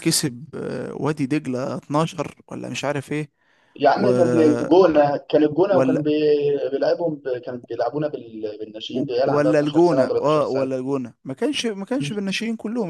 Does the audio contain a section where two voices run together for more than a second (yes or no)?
yes